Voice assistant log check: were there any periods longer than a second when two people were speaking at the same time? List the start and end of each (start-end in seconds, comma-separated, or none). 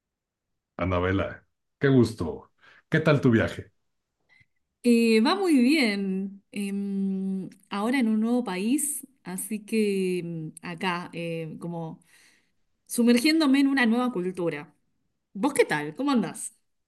none